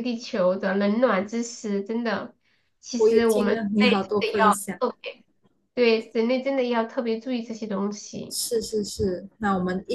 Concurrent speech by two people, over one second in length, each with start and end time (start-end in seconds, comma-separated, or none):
3.0-4.8